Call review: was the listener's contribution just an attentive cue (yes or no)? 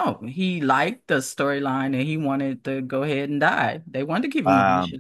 no